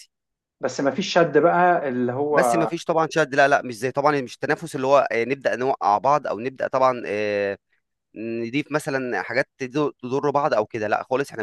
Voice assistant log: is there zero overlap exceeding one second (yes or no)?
yes